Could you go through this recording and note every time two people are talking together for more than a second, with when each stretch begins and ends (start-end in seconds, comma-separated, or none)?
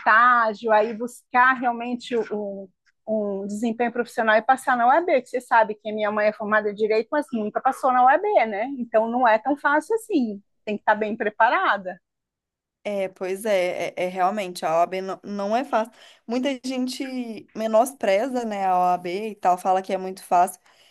none